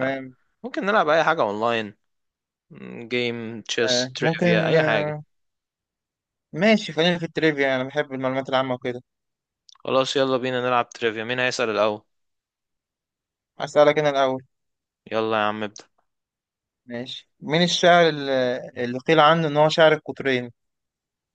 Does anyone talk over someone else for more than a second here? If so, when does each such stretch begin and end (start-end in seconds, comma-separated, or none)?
3.9-5.1